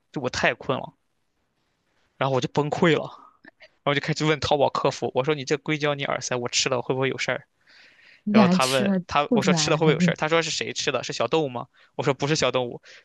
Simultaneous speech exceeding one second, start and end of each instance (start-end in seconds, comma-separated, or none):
8.3-10.1